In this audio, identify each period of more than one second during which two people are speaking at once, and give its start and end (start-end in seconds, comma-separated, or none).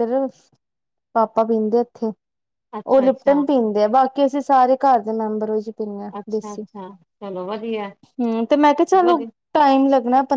none